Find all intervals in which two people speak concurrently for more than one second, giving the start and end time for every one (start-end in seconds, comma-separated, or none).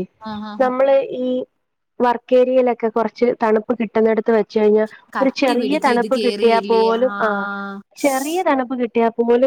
5.2-7.2